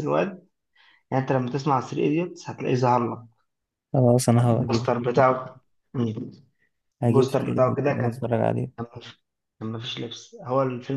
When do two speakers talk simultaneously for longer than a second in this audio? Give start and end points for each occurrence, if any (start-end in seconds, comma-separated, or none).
7.0-8.2